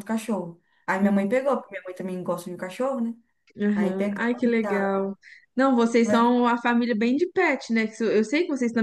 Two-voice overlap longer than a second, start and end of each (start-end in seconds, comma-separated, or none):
3.7-5.0